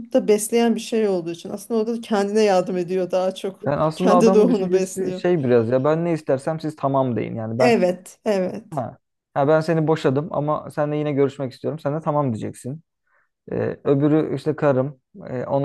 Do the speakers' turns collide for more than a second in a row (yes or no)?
yes